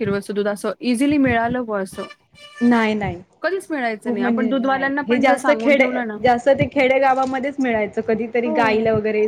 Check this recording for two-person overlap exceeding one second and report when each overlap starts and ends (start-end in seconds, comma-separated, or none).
4.0-5.9